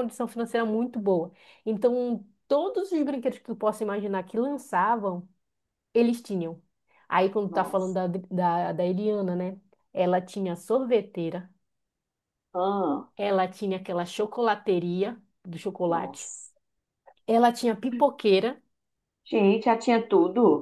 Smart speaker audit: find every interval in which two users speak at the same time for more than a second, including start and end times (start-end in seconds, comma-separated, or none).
none